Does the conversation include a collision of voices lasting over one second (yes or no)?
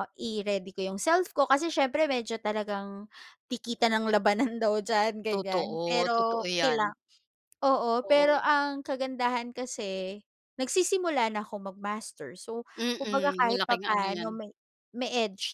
yes